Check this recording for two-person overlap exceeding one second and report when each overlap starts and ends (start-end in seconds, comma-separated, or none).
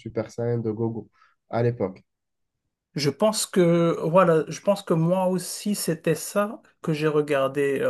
none